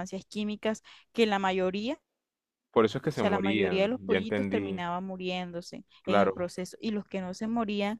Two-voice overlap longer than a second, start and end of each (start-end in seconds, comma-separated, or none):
3.0-4.8